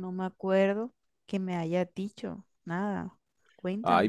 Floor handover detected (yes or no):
yes